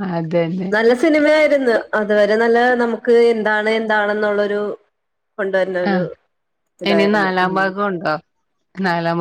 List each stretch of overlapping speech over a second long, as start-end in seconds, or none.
none